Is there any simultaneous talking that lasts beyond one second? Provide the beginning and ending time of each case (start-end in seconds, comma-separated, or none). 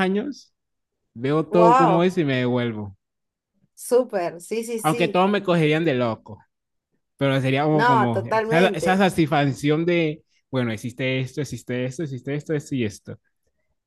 7.7-9.1